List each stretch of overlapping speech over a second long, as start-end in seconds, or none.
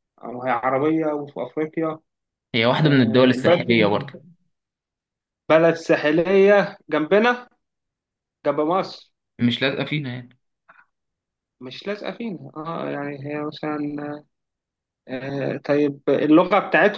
2.8-4.1